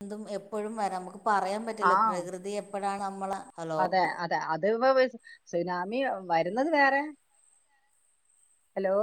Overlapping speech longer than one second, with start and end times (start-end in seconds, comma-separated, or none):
none